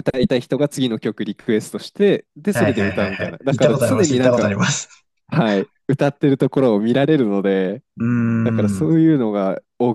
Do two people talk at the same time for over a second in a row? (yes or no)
yes